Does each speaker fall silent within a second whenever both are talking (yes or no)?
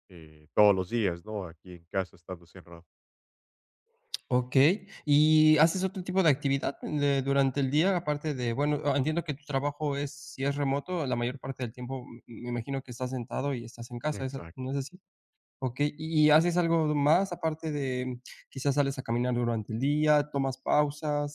yes